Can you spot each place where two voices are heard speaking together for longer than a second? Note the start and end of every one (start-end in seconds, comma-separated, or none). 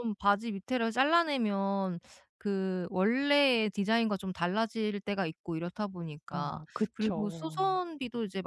6.3-7.8